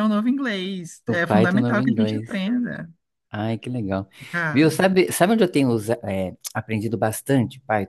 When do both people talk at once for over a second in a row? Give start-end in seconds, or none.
1.1-2.3